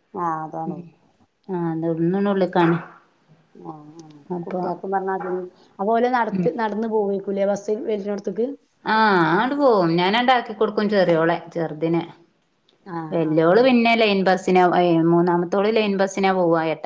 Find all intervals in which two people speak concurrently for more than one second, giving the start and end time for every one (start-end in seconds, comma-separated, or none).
none